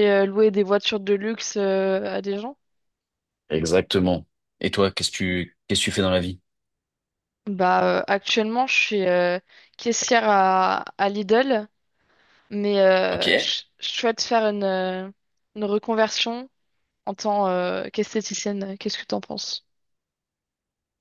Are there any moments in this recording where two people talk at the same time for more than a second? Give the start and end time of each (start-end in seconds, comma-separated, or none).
none